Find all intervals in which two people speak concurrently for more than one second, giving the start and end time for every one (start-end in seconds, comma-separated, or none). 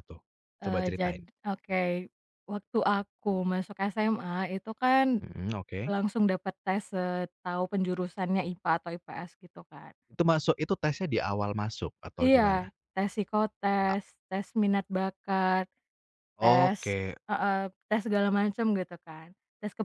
none